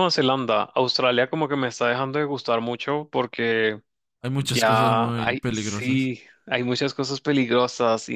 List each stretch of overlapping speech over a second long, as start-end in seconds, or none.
4.4-6.1